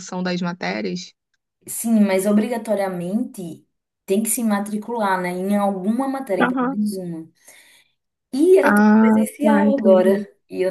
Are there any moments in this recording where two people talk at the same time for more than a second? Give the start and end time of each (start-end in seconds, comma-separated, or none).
8.6-10.1